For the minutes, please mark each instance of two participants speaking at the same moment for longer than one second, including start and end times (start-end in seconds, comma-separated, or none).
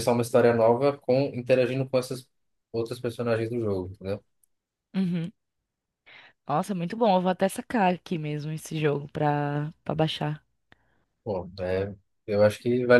none